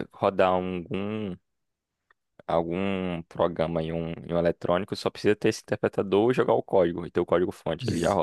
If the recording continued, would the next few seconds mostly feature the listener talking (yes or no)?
yes